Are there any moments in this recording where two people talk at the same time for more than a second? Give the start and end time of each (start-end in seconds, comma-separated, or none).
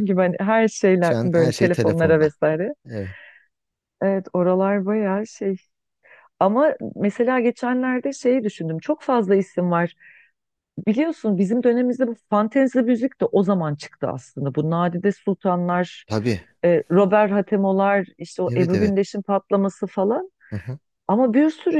1.0-2.3